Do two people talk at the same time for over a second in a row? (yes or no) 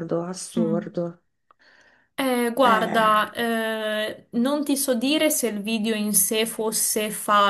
no